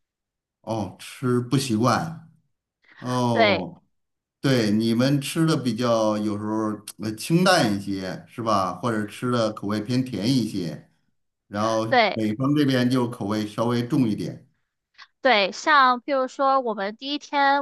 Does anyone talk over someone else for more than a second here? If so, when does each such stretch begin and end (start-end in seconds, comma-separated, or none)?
none